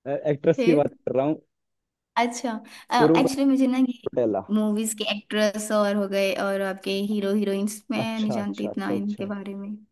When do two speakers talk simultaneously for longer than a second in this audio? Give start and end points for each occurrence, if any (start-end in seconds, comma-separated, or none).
8.0-9.2